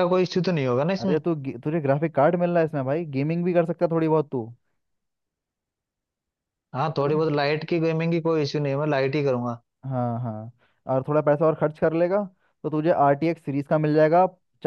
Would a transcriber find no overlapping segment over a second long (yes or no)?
yes